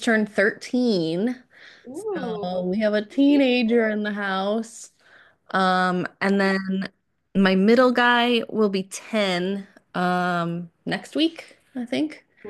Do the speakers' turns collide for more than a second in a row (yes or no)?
yes